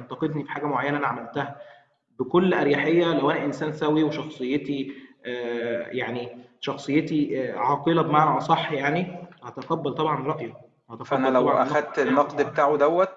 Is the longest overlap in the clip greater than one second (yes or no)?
yes